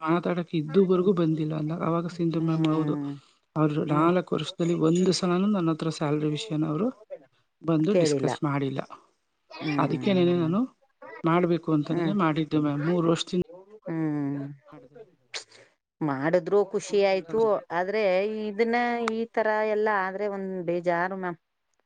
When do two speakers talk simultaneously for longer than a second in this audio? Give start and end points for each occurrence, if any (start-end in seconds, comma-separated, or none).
none